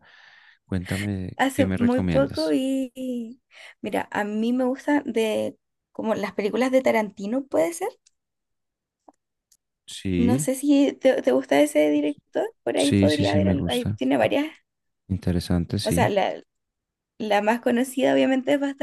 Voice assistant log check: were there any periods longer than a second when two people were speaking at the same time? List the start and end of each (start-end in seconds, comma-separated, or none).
1.4-2.6, 12.8-14.0